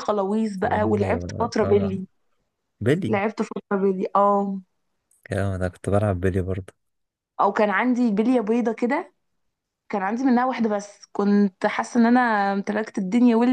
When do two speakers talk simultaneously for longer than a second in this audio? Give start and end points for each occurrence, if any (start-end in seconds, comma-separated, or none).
0.6-2.0